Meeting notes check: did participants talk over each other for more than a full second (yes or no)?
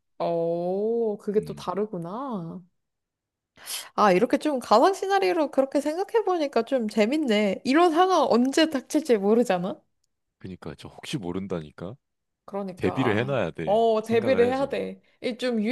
yes